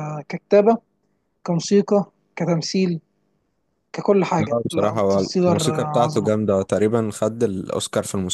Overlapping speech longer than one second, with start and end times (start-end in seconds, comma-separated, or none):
4.4-6.3